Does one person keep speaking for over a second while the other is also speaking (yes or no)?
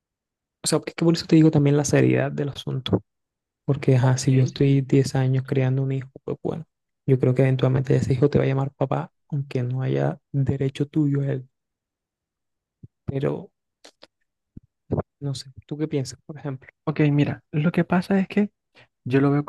no